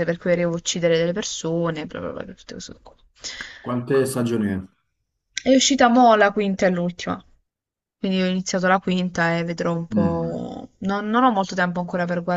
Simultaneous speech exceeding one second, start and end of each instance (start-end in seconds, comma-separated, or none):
none